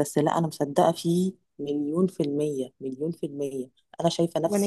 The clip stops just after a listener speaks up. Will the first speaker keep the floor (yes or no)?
yes